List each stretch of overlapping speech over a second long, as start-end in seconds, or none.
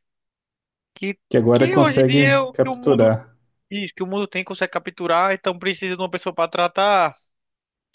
1.3-3.1